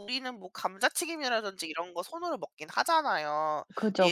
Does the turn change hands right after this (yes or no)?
no